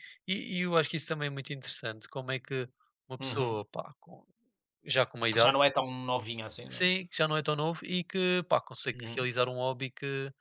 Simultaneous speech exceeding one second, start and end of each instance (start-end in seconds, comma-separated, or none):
none